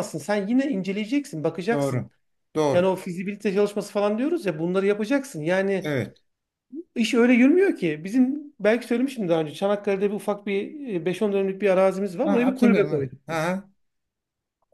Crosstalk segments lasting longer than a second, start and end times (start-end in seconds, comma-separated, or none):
12.2-13.6